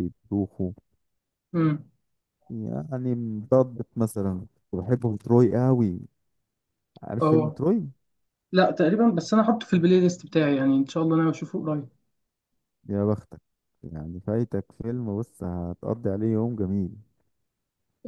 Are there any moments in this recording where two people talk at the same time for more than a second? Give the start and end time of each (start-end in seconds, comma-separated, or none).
none